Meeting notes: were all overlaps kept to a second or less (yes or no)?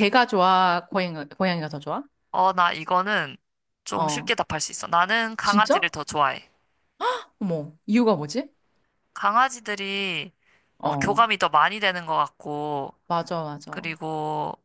yes